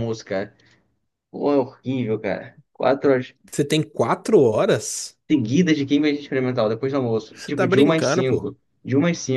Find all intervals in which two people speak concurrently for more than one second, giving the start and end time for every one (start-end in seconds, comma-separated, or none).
7.3-8.5